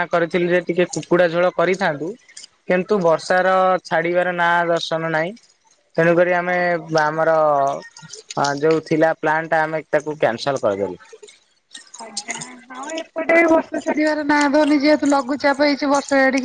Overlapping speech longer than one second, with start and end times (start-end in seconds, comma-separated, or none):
none